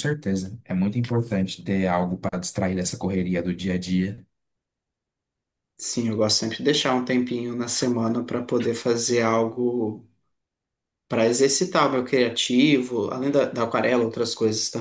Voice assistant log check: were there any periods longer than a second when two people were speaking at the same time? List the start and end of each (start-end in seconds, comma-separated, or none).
none